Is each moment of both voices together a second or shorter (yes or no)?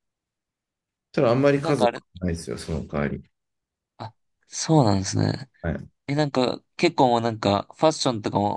yes